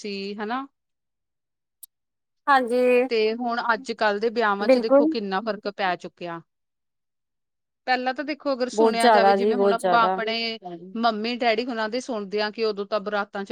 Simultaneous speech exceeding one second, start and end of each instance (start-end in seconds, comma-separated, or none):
8.7-10.1